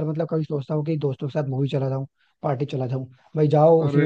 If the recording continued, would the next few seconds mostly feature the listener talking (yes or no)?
no